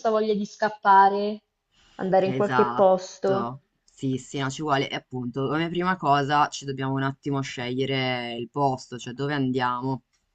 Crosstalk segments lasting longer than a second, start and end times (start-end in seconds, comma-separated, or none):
2.2-3.6